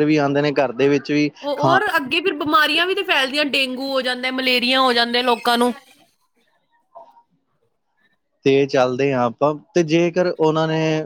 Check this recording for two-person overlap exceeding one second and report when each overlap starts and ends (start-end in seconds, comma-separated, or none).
none